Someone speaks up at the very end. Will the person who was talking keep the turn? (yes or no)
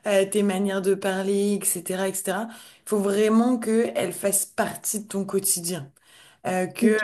yes